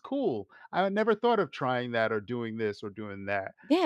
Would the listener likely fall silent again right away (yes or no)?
no